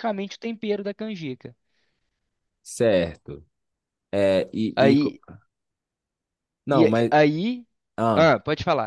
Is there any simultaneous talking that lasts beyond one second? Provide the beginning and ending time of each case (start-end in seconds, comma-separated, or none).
none